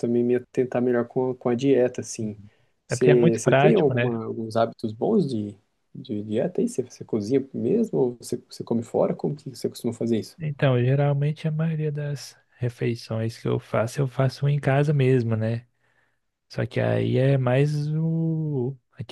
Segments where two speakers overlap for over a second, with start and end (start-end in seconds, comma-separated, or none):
2.9-4.1